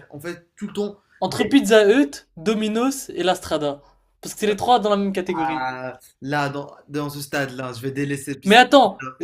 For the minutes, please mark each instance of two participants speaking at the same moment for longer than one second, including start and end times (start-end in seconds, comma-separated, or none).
none